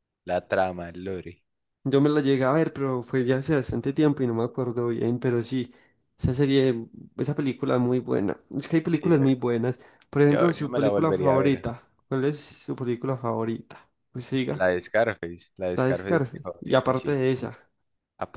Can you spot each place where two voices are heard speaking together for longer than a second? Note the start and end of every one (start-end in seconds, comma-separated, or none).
10.3-11.7, 15.7-17.2